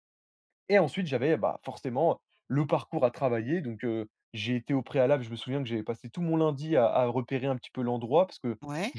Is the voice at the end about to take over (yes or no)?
no